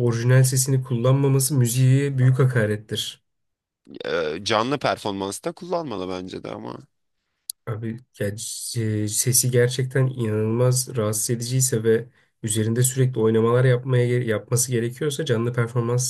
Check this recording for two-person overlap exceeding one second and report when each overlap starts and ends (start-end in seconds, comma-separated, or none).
none